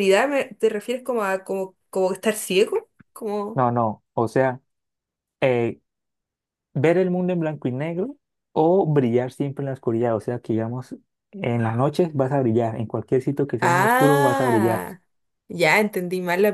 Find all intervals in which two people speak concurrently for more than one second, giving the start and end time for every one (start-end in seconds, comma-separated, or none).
13.6-14.9